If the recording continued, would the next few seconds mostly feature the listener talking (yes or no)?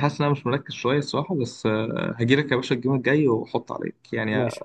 yes